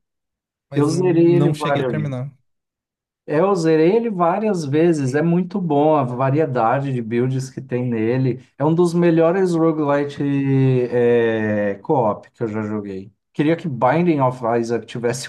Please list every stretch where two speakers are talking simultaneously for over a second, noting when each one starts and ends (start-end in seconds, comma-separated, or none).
0.8-1.9